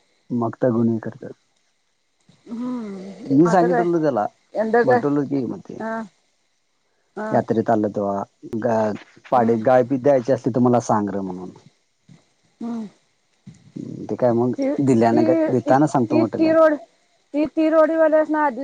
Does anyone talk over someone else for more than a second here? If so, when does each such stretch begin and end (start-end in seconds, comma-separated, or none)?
14.6-16.5